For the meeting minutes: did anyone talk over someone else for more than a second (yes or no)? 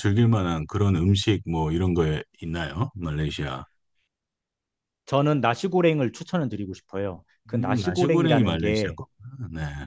yes